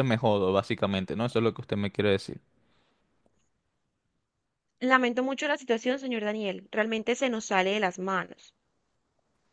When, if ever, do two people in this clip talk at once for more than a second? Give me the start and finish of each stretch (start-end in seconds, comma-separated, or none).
none